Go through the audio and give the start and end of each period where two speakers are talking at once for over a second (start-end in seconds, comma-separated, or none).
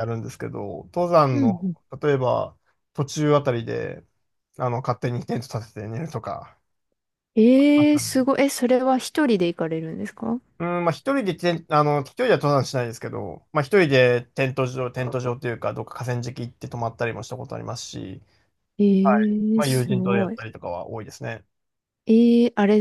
19.0-20.4